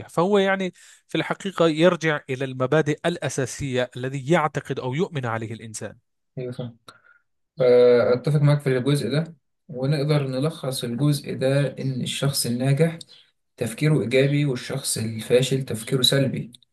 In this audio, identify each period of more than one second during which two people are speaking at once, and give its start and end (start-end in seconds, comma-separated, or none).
none